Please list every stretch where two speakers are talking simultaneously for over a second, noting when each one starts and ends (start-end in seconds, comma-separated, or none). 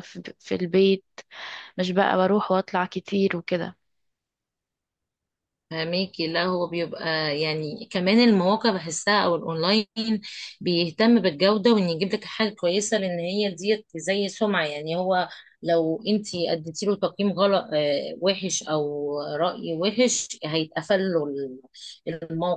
none